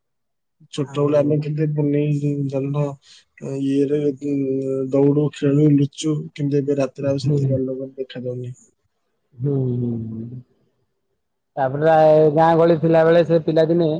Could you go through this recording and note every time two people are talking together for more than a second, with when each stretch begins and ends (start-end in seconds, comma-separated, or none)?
none